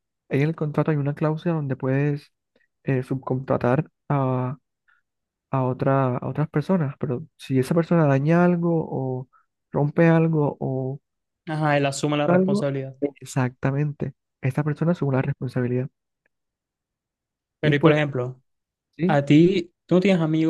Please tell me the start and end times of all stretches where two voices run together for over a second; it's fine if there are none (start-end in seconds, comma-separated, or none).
none